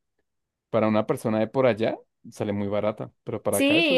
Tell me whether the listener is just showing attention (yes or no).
no